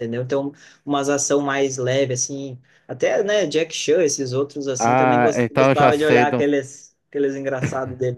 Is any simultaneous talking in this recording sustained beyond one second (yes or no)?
yes